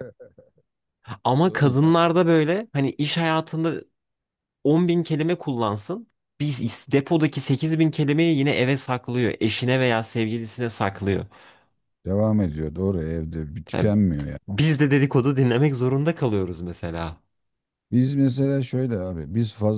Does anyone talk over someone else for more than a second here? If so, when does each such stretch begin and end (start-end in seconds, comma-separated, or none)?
none